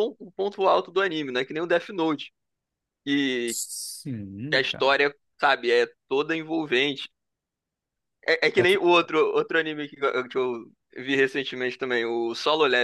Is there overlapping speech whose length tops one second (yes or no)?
no